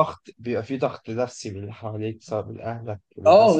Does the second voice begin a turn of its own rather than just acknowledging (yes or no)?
yes